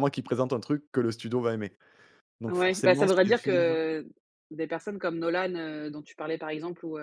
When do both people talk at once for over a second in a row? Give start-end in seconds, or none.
2.5-3.8